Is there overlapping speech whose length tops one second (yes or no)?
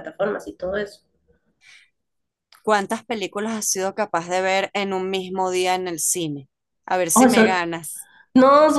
no